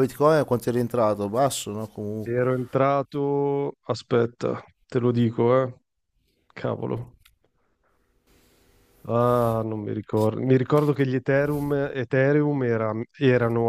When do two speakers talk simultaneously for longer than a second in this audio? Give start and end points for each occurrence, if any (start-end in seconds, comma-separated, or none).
none